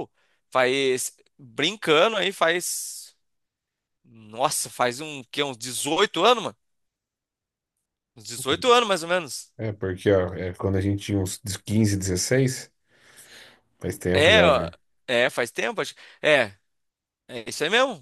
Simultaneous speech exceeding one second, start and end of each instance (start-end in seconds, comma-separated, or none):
none